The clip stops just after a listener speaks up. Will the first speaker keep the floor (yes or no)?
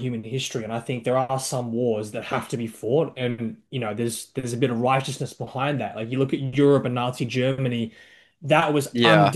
yes